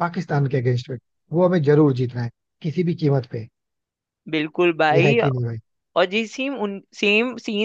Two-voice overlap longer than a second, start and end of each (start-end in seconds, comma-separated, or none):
none